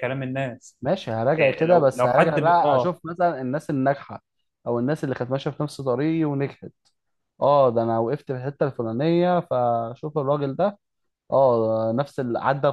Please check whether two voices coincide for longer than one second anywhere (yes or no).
yes